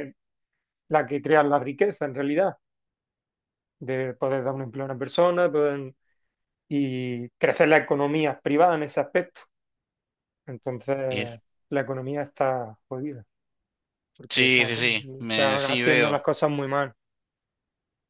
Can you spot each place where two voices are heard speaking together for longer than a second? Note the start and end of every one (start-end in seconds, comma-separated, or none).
14.3-16.2